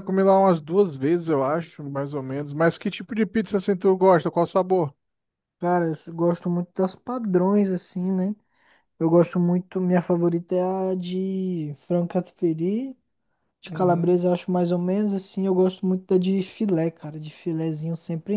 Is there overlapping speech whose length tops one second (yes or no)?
no